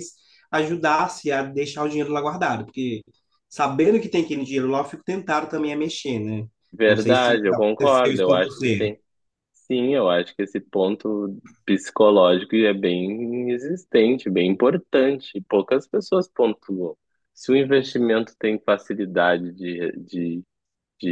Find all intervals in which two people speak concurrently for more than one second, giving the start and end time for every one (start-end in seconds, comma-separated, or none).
6.9-8.9